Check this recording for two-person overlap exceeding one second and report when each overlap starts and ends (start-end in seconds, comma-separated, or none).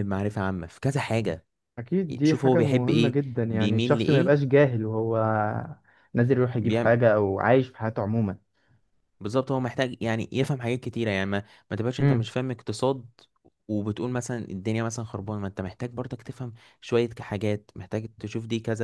2.2-4.4